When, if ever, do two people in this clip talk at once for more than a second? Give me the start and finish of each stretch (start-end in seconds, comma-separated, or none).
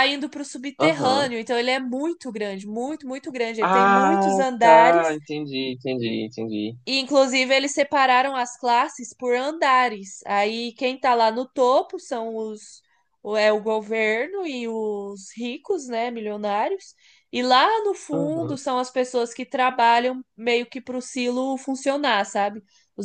3.6-5.2